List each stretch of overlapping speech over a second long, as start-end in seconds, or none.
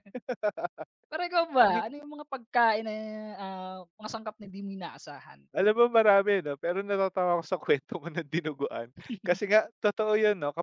none